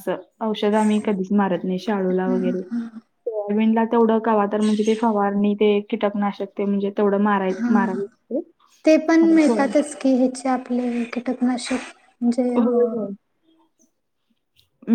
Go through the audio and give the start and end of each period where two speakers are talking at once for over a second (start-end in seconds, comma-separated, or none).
none